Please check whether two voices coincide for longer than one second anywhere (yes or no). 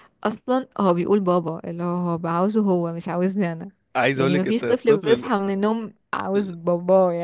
yes